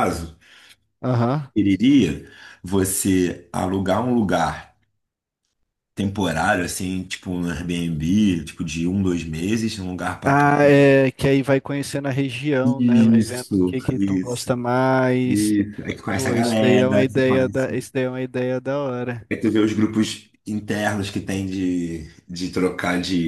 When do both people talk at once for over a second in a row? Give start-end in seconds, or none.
12.6-14.6, 16.1-17.9